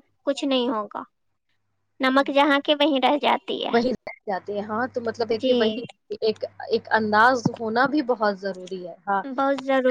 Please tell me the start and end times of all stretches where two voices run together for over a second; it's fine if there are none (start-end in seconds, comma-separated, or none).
none